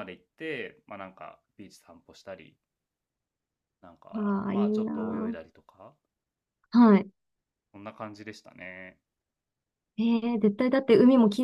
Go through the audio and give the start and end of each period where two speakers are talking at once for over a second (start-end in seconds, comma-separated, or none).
4.1-5.3